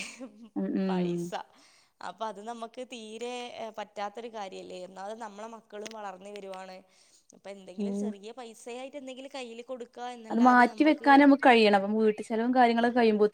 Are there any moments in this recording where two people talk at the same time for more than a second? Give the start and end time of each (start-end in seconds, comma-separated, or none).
none